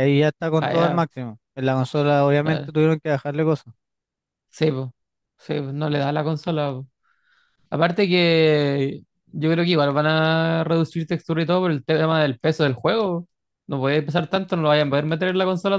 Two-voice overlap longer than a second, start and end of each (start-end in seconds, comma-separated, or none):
none